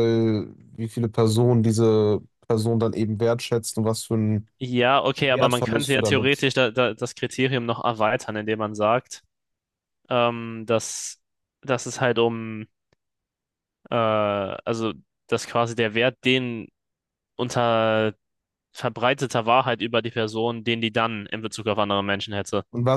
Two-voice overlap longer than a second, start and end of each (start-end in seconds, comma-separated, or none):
5.2-6.5